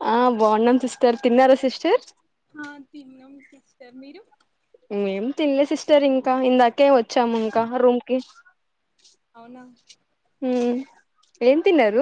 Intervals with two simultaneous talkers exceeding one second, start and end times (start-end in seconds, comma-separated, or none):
none